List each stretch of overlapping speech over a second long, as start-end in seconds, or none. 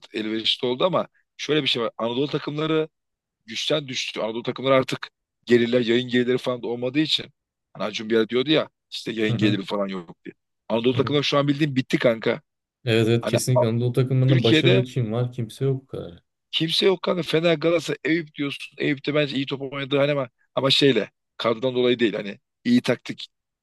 none